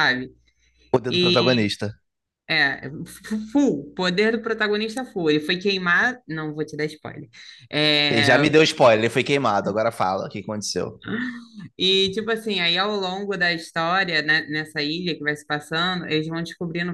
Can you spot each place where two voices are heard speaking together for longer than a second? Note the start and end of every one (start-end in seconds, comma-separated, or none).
none